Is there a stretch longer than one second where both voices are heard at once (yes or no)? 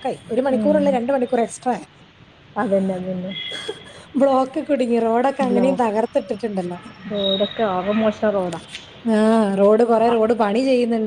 no